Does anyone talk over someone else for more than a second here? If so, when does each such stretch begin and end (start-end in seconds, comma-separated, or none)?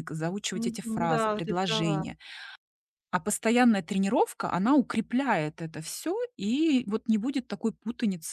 0.5-2.0